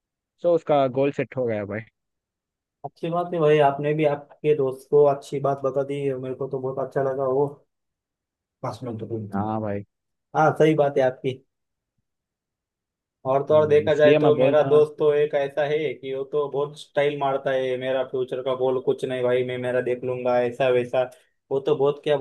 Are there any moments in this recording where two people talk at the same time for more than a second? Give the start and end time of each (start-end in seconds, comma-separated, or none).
13.5-14.8